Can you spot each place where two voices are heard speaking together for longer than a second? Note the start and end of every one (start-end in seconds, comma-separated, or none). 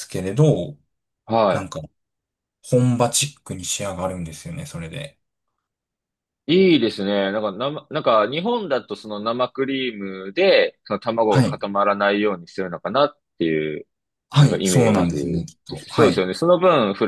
14.4-16.3